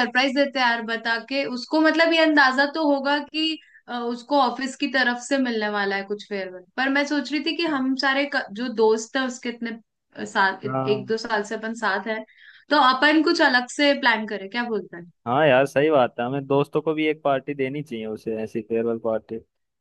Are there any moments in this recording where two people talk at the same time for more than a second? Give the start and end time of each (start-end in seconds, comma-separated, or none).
none